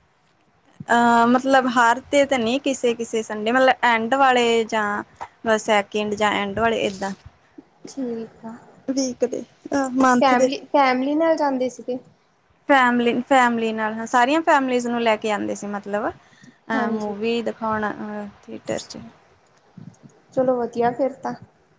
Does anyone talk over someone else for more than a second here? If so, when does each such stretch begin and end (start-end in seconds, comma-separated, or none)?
none